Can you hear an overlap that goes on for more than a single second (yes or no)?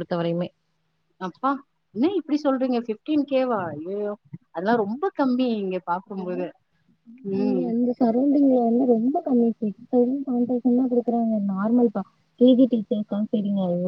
no